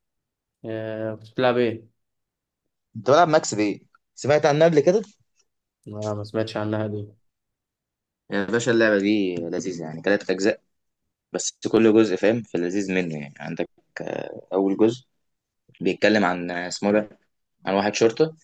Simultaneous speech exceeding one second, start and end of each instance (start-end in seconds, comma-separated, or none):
none